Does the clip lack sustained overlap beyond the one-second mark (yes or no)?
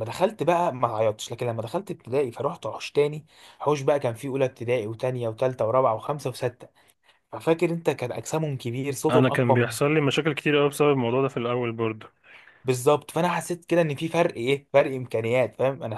yes